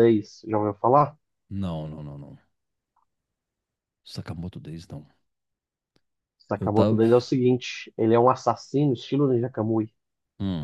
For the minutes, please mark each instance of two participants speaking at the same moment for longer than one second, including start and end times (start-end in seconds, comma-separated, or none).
none